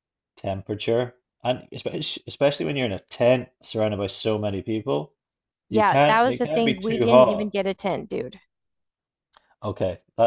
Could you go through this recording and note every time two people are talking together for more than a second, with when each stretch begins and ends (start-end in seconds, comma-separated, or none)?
5.7-7.5